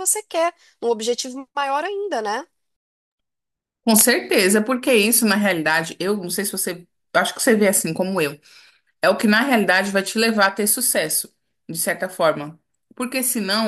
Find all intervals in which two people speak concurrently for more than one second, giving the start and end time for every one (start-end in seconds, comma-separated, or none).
none